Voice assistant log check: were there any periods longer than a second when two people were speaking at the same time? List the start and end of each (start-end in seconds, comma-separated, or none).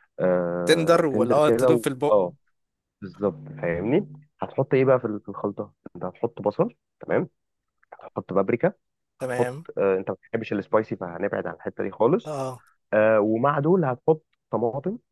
0.7-2.2